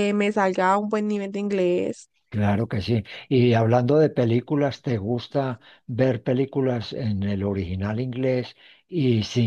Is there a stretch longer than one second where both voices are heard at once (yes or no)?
no